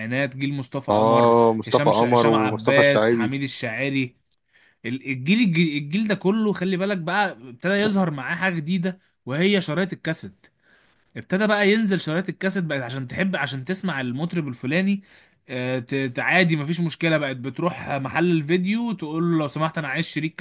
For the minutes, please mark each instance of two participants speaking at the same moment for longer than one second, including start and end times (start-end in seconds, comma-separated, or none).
0.9-3.4